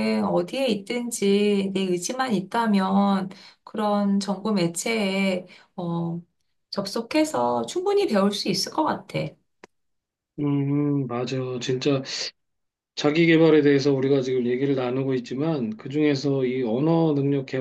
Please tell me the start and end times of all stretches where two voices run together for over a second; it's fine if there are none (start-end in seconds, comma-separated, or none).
none